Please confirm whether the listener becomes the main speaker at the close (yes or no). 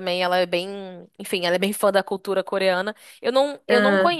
no